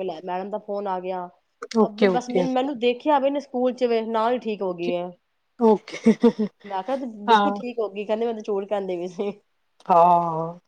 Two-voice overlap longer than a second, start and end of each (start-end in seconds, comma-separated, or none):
none